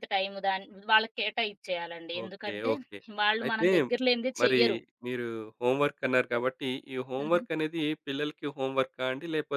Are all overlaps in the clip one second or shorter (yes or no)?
yes